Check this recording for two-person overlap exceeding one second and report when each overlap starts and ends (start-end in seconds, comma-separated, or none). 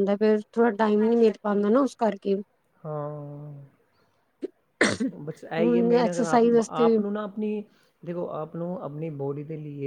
5.6-7.0